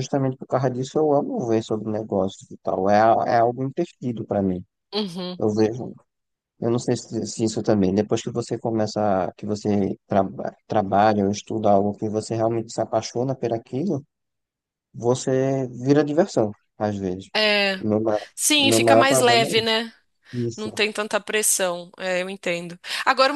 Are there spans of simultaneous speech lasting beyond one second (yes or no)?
yes